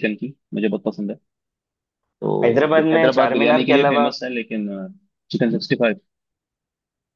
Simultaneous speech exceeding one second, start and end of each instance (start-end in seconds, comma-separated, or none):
2.4-4.1